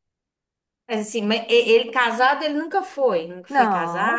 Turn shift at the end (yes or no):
yes